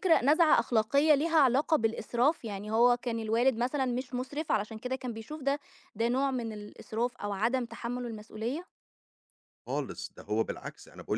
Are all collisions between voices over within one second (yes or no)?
yes